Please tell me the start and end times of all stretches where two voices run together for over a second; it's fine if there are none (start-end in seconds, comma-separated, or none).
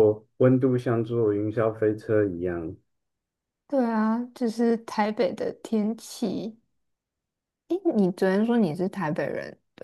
none